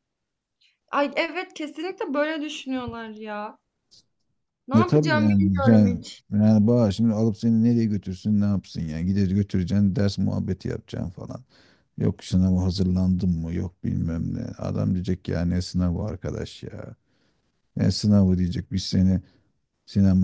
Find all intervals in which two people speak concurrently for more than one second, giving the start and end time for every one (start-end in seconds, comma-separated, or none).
4.8-6.2